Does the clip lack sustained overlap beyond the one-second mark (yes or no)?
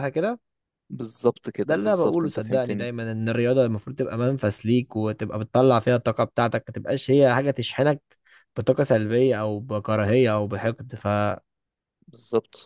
no